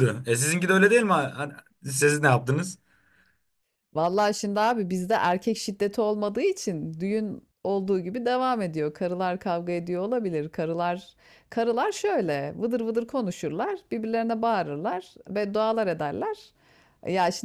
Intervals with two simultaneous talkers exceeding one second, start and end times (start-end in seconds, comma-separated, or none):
none